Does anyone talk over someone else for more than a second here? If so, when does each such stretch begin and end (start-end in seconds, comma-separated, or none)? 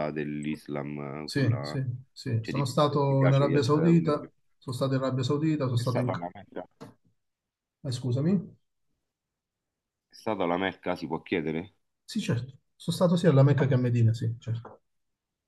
2.4-4.3